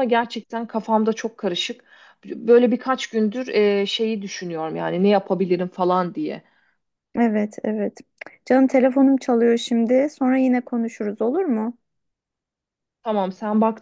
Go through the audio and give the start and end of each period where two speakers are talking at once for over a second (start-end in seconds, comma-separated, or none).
none